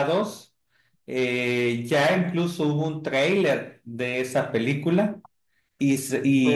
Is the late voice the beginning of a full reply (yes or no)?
no